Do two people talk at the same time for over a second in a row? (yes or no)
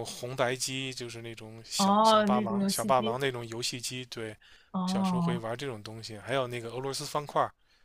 yes